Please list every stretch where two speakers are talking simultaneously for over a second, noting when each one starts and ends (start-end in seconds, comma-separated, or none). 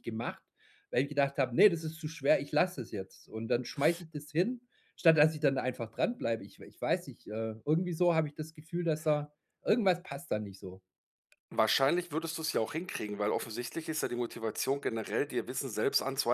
none